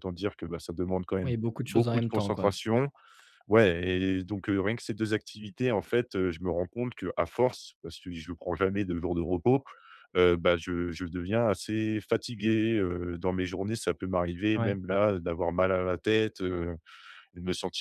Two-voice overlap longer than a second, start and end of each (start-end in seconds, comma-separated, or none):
1.2-2.6